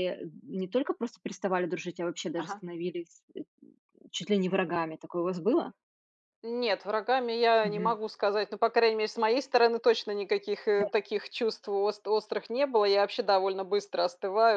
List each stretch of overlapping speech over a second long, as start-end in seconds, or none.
none